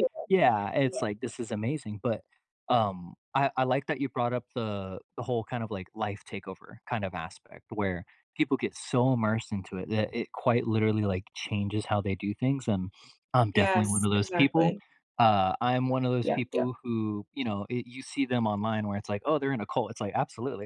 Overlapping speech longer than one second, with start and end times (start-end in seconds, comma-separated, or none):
13.5-14.7